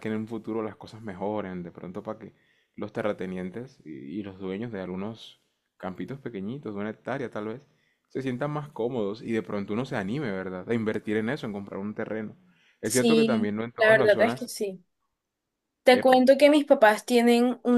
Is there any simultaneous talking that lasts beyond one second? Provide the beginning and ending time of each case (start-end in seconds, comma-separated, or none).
12.8-14.5